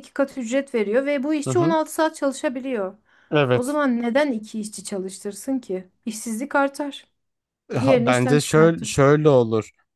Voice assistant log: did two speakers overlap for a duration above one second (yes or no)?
yes